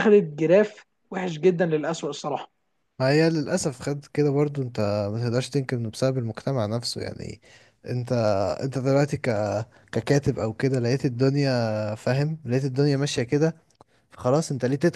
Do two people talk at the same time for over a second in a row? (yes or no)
no